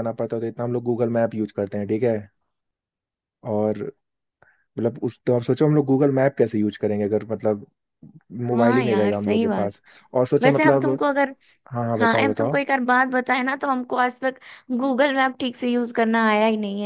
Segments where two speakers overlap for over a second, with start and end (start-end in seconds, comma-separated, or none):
8.5-9.8